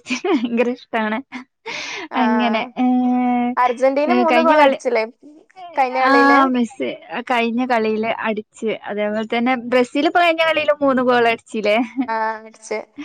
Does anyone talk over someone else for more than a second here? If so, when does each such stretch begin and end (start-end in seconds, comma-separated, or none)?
none